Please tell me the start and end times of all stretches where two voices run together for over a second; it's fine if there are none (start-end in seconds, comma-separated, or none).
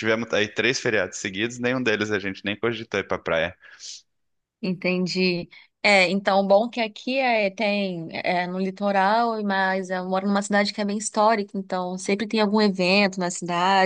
none